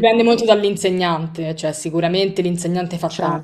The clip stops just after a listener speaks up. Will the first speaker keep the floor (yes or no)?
yes